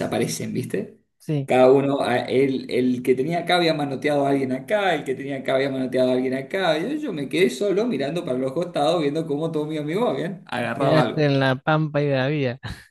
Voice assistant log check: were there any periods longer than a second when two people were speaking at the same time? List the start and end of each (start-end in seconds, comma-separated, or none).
none